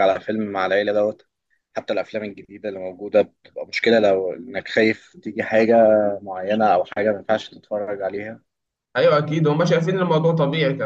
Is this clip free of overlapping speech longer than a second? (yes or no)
yes